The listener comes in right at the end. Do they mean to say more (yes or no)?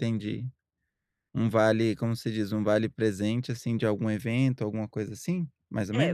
yes